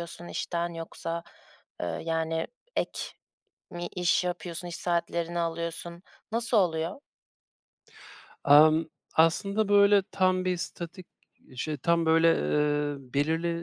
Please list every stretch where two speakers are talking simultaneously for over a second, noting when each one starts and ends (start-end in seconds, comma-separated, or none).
none